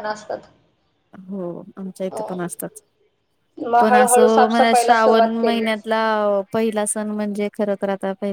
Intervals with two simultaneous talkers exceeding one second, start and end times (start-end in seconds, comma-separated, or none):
3.8-5.7